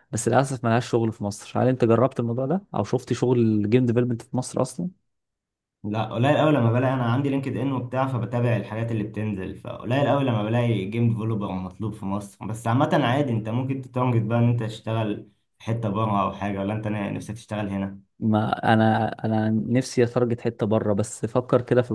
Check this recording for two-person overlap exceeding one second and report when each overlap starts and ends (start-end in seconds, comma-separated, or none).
none